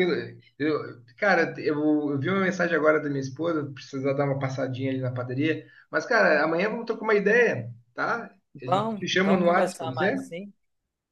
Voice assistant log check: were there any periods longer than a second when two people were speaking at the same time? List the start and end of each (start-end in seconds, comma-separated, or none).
8.6-10.2